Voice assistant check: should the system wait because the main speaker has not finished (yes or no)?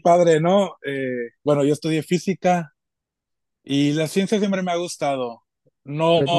yes